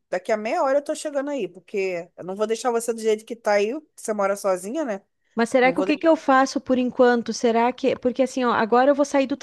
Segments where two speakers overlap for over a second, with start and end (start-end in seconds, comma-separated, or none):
none